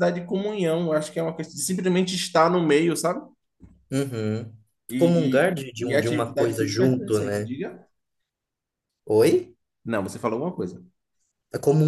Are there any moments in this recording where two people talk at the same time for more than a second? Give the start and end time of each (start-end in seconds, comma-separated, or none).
5.0-7.5